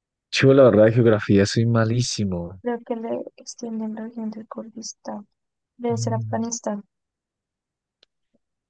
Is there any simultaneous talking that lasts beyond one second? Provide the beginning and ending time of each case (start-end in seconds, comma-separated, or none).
none